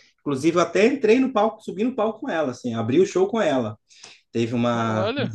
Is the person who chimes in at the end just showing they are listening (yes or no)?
yes